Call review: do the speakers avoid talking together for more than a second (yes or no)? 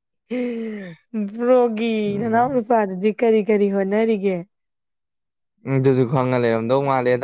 yes